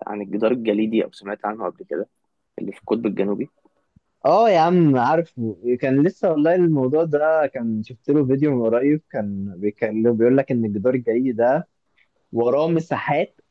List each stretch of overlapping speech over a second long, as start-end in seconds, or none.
none